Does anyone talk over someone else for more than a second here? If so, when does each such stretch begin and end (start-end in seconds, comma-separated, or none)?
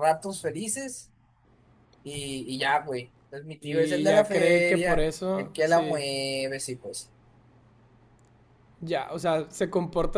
3.6-6.0